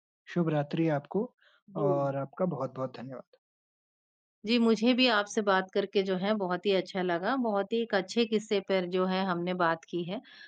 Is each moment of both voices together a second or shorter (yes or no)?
yes